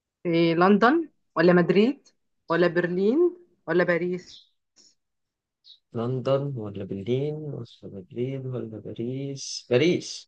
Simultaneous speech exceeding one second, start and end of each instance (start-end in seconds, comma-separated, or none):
none